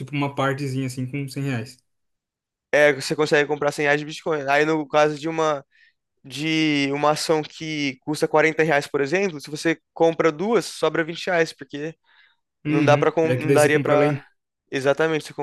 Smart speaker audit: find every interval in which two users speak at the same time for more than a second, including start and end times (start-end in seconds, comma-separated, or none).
12.7-14.2